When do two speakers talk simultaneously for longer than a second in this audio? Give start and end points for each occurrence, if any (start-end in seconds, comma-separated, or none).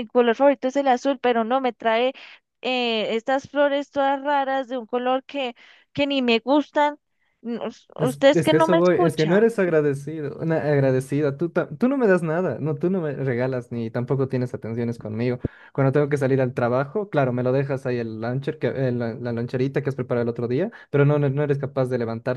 8.0-9.5